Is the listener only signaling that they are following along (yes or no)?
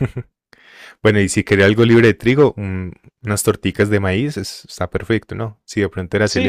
no